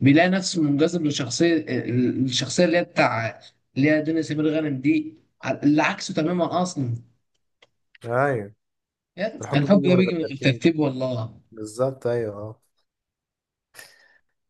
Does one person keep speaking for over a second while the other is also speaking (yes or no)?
yes